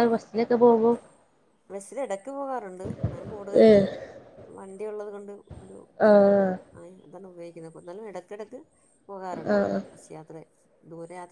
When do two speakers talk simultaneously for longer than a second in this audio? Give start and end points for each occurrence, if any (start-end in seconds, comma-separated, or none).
none